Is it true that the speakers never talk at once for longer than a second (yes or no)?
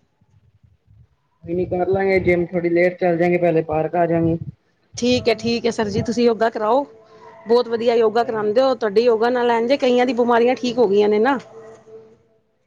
yes